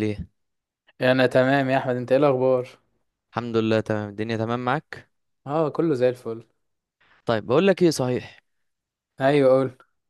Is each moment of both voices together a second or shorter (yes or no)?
yes